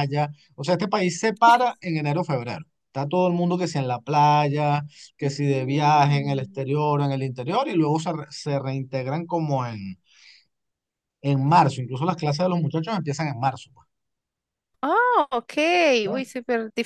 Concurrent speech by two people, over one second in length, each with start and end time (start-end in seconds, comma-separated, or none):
5.2-6.6